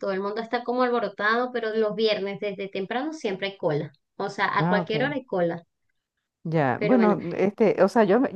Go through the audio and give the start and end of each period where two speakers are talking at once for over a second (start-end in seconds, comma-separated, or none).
none